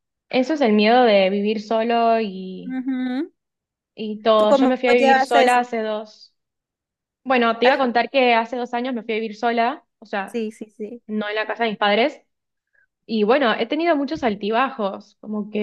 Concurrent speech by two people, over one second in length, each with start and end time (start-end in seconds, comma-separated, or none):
4.3-5.7